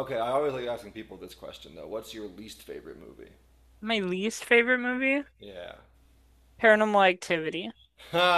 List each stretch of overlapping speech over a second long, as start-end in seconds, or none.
none